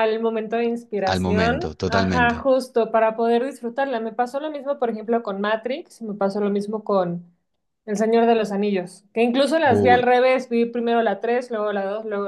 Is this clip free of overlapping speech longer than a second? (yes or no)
no